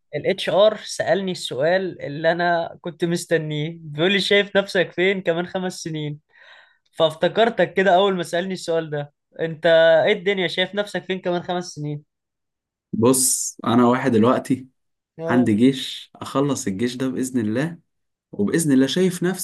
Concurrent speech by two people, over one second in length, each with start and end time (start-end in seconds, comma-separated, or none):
none